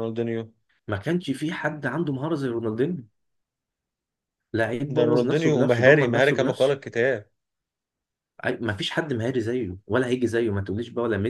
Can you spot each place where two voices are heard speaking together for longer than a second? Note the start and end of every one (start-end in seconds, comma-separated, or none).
4.9-6.8